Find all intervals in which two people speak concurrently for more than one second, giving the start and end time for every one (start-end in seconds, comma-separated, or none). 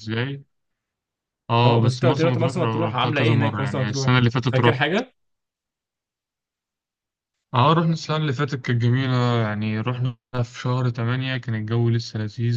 1.6-4.8